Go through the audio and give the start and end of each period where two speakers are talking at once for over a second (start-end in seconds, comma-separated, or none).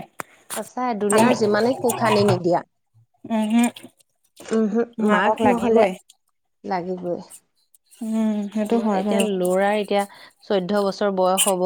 none